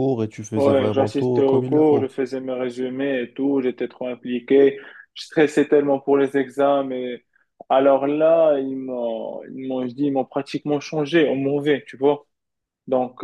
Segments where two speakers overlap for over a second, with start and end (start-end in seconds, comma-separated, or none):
0.6-2.1